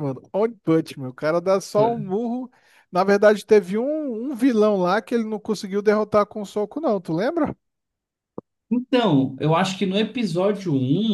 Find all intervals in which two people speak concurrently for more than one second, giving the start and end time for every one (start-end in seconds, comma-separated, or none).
none